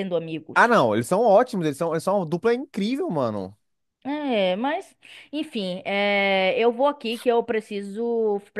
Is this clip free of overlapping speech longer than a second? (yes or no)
yes